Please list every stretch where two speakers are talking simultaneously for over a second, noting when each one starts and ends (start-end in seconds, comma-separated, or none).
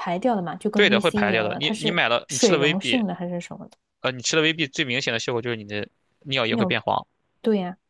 0.7-3.0